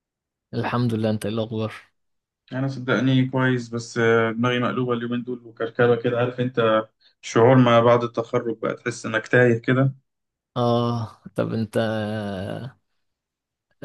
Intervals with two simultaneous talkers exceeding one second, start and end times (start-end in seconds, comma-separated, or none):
none